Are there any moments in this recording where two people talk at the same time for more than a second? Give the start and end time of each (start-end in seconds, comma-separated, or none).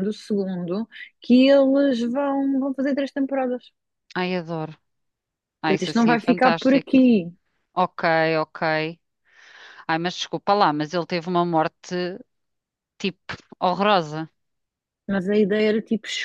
5.6-6.9